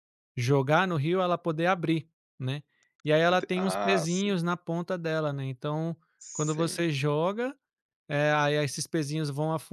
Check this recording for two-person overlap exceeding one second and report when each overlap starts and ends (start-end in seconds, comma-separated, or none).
3.2-4.4